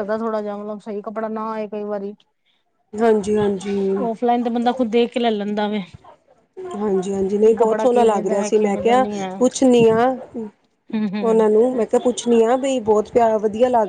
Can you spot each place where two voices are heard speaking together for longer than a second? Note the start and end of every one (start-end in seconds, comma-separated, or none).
7.5-9.3